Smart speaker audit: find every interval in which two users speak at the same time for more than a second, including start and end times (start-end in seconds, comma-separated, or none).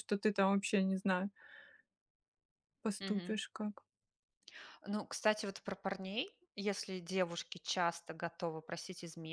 none